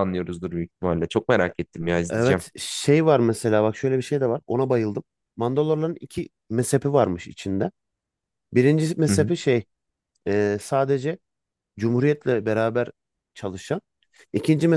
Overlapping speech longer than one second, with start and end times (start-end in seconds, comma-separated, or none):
none